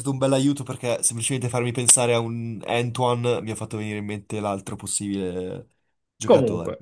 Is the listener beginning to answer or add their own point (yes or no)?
yes